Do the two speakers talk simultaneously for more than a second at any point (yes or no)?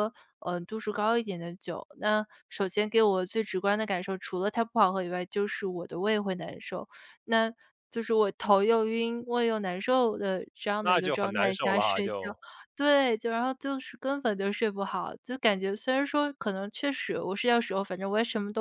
yes